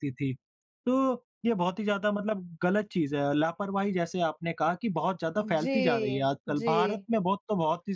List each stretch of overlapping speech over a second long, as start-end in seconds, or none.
5.4-7.1